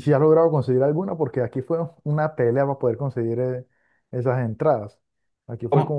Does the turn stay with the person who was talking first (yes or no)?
yes